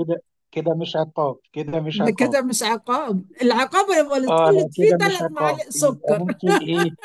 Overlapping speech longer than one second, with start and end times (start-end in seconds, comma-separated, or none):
4.3-6.2